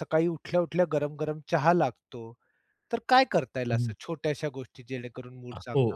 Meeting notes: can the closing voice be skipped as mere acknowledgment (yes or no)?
no